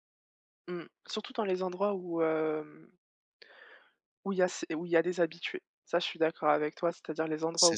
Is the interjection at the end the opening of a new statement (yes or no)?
no